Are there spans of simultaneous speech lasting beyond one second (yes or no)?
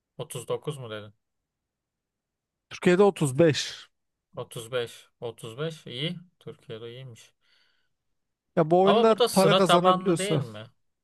yes